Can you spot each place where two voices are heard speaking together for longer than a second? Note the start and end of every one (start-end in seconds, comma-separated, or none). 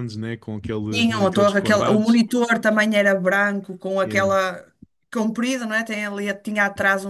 0.9-2.3